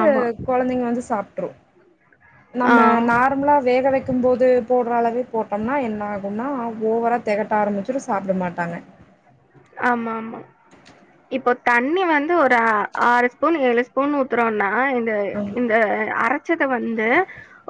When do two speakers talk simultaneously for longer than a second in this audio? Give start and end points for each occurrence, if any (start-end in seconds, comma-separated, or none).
none